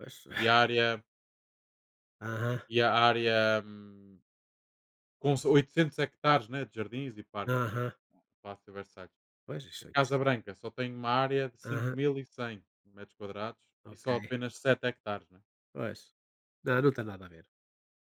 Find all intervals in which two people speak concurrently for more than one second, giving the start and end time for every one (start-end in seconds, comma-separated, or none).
none